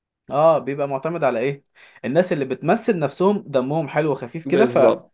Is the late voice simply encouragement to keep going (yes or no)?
no